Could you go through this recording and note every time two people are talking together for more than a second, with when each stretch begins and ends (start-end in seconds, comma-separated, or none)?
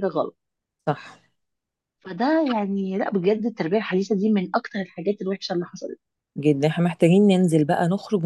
none